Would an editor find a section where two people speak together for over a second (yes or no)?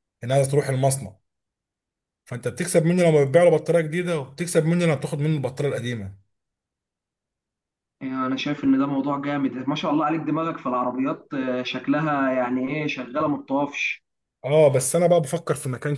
no